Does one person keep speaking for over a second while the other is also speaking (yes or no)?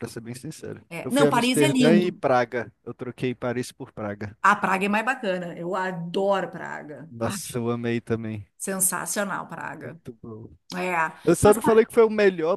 yes